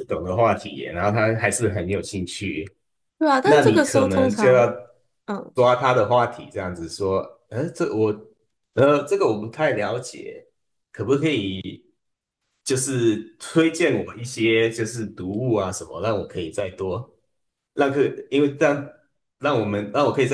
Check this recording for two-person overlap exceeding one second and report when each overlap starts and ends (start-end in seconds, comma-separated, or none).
3.4-4.7